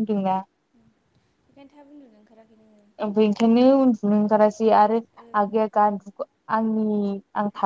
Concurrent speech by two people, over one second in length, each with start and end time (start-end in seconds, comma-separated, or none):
none